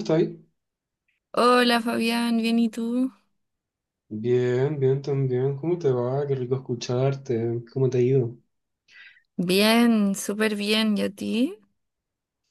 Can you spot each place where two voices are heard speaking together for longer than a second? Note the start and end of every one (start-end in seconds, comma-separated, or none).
none